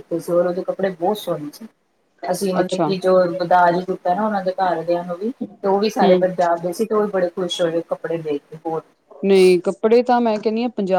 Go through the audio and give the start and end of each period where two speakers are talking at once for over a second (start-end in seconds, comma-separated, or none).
none